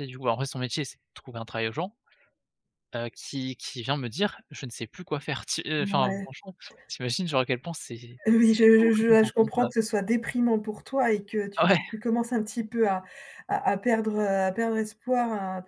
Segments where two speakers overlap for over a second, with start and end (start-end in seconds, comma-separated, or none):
8.2-9.7